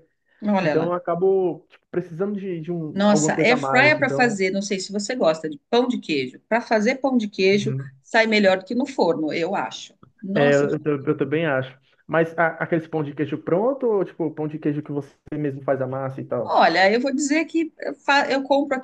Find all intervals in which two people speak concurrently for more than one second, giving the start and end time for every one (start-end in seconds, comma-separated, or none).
2.9-4.4